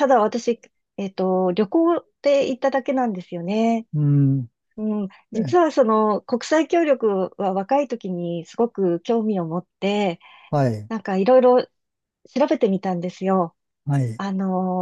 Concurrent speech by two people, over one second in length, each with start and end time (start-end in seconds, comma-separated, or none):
none